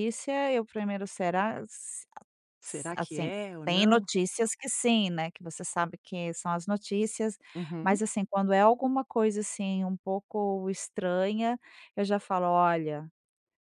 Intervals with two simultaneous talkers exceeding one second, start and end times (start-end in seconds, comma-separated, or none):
2.6-4.1